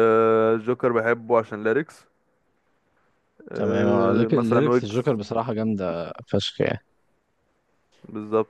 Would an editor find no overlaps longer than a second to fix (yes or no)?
no